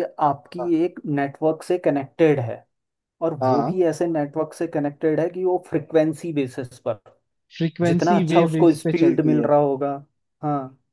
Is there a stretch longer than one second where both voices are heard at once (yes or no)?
yes